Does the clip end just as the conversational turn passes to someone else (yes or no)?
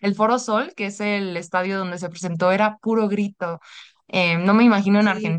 no